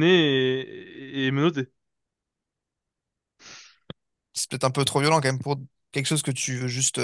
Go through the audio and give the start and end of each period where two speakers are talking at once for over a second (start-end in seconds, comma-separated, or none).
none